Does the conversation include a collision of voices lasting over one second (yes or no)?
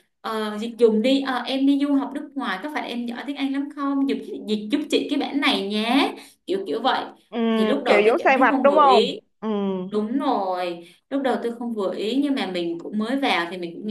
yes